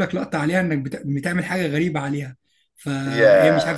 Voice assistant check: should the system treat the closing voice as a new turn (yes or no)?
no